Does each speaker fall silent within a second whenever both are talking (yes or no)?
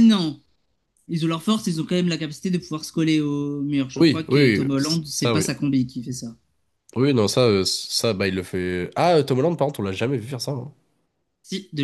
no